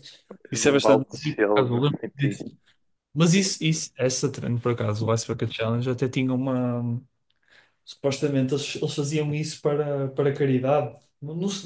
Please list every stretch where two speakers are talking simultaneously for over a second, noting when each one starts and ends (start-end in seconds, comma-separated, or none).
0.6-2.4